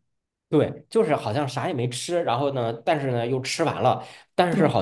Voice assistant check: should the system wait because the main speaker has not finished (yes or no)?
yes